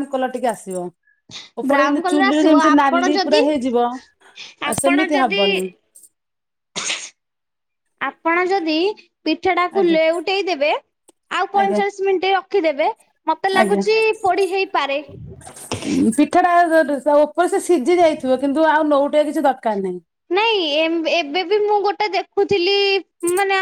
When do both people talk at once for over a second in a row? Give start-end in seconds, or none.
1.7-3.4